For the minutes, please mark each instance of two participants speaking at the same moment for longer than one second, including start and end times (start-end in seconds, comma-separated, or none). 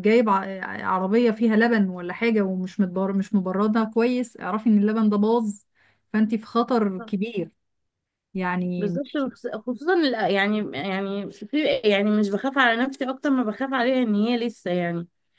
none